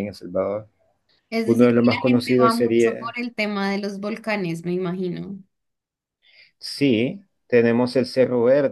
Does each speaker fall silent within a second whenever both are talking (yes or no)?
no